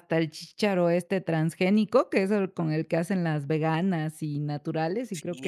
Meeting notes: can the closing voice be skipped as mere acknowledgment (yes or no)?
no